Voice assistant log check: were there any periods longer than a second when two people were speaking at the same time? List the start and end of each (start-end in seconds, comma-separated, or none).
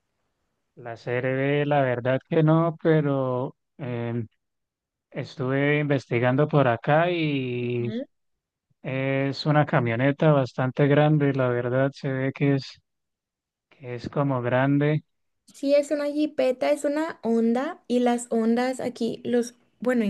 none